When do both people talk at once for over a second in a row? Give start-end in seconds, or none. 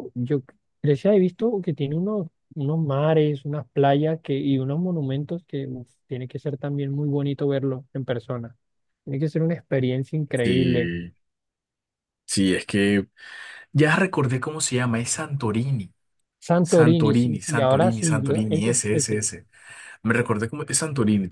16.6-19.2